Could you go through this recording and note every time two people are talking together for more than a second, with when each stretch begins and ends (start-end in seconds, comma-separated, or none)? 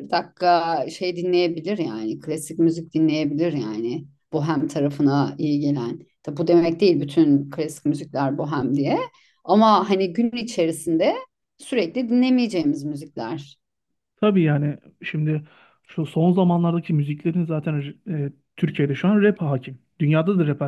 none